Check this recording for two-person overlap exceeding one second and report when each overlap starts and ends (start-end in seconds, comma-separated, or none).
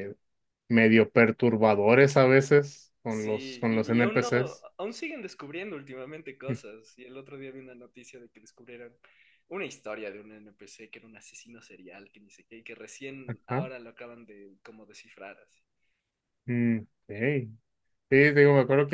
3.1-4.3